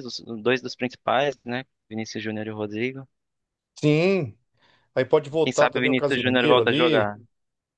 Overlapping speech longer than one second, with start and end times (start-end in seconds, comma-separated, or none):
5.4-7.1